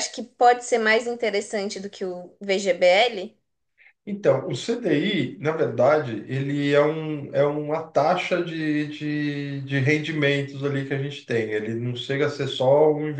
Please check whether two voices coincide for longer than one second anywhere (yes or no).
no